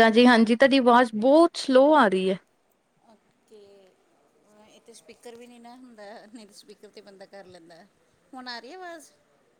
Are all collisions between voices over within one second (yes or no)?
yes